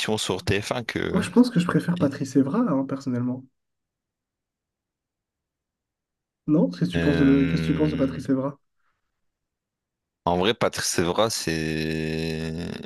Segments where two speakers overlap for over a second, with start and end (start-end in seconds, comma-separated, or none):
7.0-8.2